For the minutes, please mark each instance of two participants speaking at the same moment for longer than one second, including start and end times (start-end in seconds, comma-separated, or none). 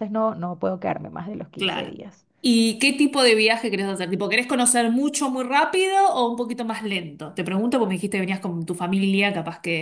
none